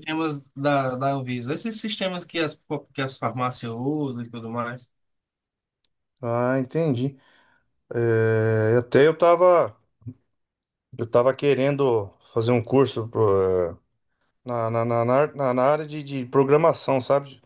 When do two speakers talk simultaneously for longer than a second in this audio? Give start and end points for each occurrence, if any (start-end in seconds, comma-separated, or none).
none